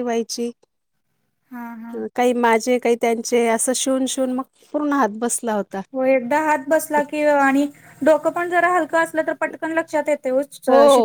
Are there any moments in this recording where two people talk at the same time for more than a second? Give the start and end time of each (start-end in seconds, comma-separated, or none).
none